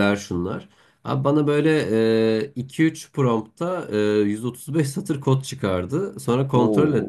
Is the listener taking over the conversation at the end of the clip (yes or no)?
no